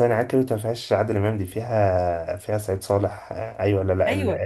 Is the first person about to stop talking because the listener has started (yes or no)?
yes